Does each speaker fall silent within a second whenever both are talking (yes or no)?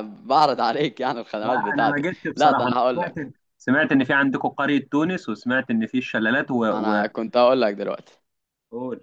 no